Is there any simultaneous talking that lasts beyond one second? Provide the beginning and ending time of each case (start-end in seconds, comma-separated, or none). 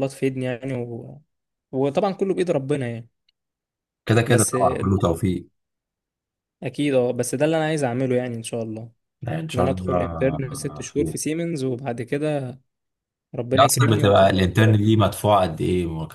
9.5-11.2, 13.6-15.0